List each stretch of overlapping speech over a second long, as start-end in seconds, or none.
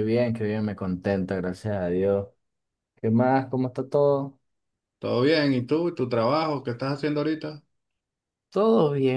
none